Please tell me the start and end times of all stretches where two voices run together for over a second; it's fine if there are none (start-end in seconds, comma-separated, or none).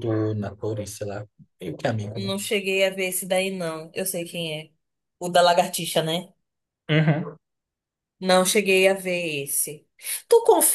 none